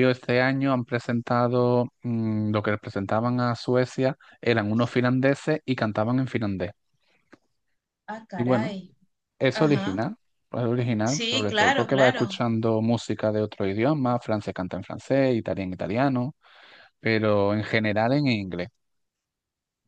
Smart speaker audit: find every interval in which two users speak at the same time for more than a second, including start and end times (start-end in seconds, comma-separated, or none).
11.0-12.4